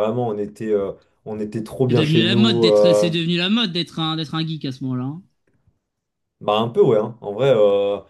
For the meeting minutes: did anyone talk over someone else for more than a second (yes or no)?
yes